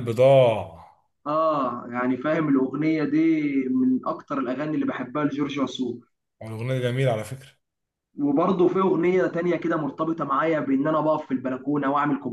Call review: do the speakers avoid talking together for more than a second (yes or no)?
yes